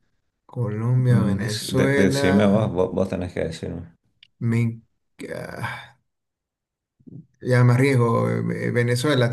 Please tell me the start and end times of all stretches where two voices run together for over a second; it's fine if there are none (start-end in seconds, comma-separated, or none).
1.1-2.6